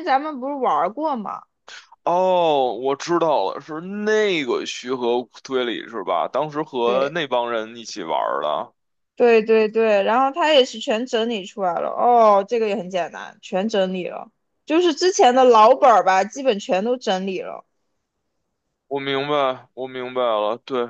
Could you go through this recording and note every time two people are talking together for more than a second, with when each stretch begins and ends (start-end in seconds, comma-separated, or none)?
none